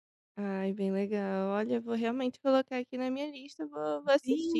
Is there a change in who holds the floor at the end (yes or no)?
yes